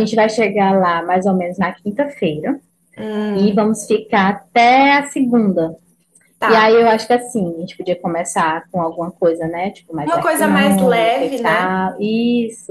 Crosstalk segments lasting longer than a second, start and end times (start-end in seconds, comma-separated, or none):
10.1-11.8